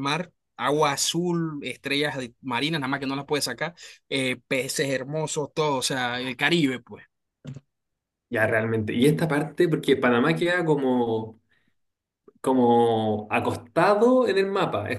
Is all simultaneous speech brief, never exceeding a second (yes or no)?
yes